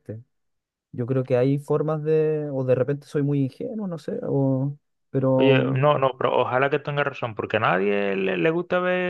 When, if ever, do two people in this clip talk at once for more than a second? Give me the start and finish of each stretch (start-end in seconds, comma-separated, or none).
none